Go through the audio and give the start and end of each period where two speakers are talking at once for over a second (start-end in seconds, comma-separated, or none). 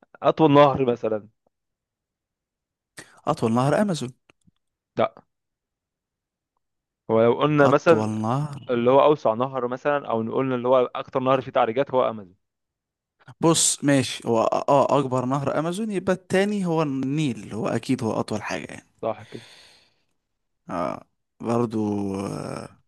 none